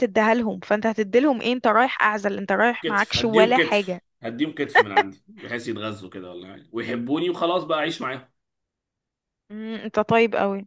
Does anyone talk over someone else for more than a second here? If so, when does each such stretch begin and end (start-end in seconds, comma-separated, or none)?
2.8-4.0